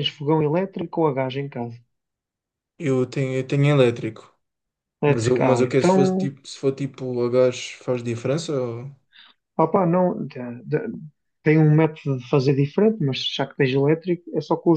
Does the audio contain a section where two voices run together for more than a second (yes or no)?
yes